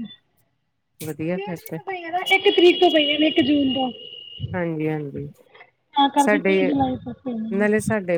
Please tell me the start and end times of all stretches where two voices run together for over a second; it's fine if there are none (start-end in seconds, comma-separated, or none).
none